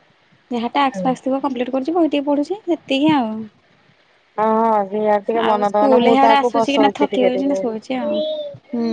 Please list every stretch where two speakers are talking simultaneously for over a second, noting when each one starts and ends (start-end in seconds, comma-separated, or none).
5.5-7.6